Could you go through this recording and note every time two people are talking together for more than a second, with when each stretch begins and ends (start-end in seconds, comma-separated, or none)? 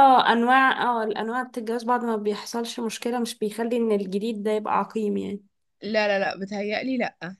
none